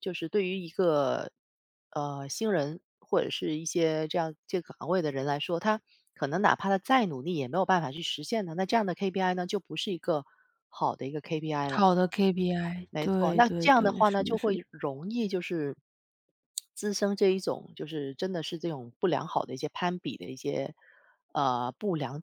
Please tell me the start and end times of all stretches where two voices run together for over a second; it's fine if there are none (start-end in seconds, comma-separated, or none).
12.9-14.6